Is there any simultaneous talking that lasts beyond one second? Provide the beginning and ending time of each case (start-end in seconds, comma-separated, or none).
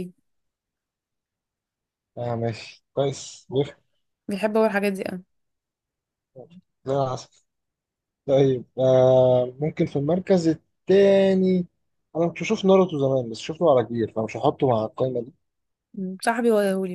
none